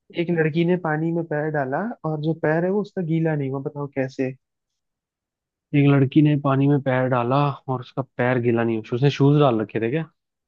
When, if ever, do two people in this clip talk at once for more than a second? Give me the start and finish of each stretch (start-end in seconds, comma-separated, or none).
none